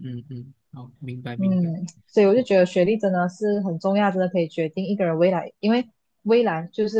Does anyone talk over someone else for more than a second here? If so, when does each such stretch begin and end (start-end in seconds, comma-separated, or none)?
none